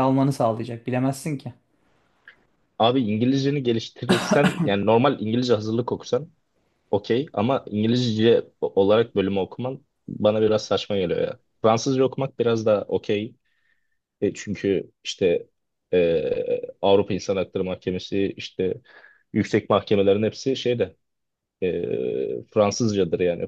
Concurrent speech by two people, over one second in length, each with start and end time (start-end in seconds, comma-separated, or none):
none